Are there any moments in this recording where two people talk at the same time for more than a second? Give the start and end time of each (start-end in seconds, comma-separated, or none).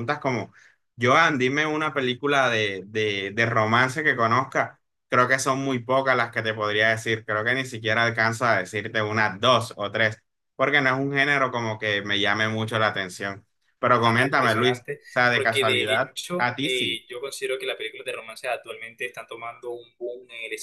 14.0-17.0